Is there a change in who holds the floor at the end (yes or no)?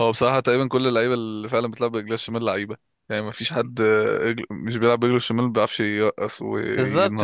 yes